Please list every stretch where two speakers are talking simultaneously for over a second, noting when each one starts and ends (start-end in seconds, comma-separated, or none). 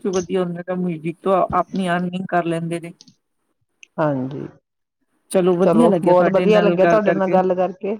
5.6-7.4